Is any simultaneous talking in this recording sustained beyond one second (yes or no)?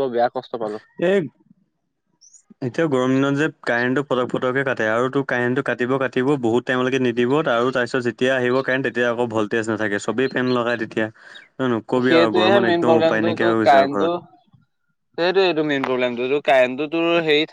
yes